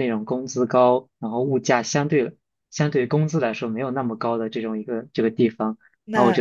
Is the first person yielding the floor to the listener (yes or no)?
no